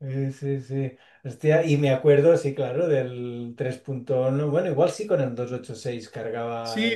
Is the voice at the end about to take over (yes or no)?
yes